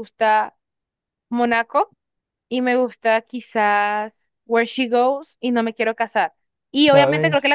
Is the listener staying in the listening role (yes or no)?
yes